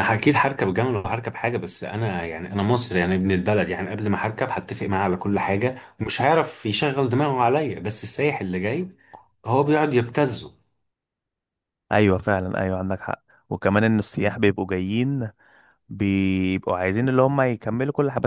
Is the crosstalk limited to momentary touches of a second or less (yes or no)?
yes